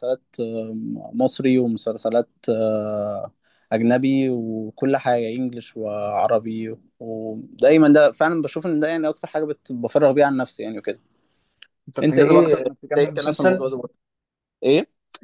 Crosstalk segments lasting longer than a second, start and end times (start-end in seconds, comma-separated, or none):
12.0-13.7